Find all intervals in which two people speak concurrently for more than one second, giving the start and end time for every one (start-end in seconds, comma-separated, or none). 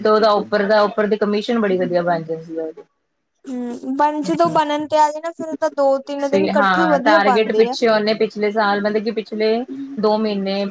6.2-7.8